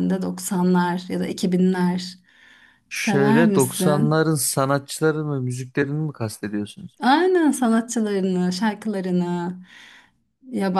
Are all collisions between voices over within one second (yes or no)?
no